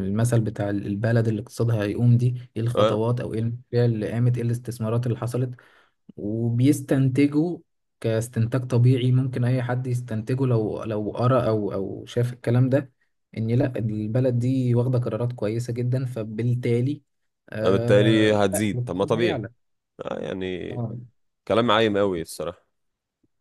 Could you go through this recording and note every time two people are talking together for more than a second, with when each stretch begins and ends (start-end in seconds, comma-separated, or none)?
17.6-19.4